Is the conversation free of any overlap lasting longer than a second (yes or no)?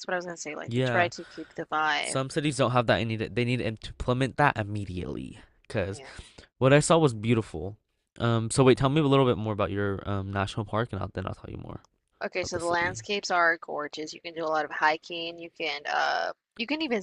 yes